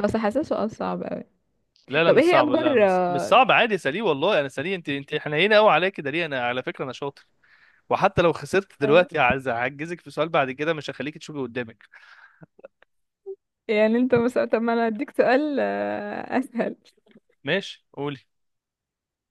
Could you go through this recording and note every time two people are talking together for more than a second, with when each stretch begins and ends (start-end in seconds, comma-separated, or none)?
2.1-3.4